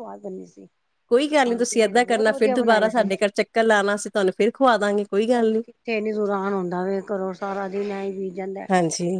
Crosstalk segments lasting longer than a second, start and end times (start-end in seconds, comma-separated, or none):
1.5-3.1